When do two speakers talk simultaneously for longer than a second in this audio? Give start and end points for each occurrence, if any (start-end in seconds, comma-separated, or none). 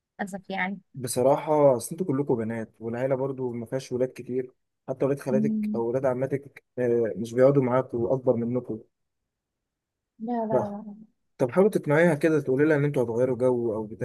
none